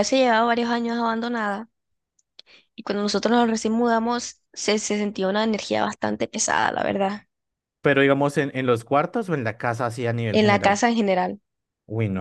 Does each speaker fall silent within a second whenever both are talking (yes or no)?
yes